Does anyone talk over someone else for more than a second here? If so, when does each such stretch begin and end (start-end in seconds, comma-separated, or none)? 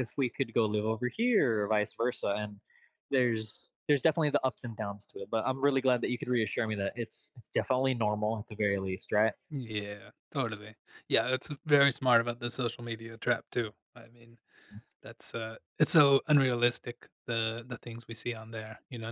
none